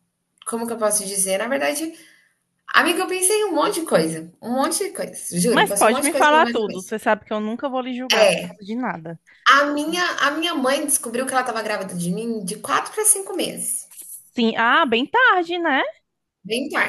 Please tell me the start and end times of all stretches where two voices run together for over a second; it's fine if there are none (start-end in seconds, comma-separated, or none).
5.5-6.9